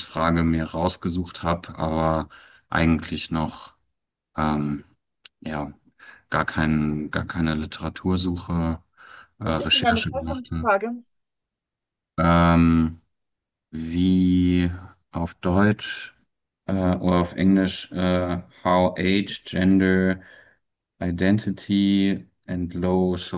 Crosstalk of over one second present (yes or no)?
yes